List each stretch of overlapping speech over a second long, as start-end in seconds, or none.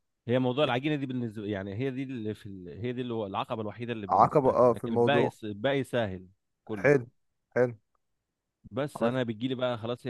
4.1-5.3